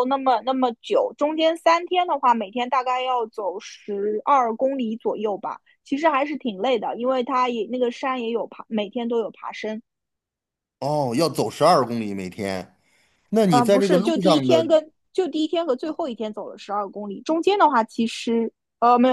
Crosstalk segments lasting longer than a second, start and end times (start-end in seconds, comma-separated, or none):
13.5-14.8